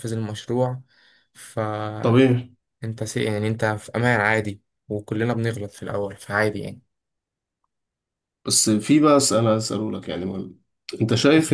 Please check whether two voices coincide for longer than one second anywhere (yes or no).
no